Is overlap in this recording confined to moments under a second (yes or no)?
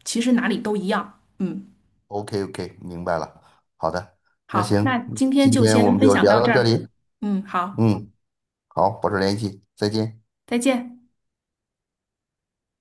no